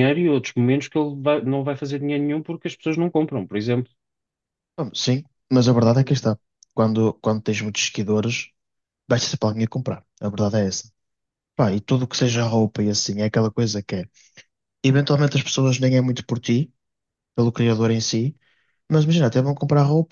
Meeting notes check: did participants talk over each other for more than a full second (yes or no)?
no